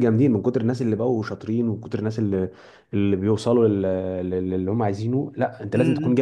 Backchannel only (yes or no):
no